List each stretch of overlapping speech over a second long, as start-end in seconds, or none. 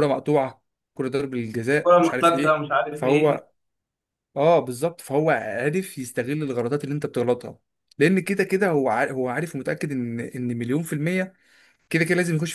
1.7-3.4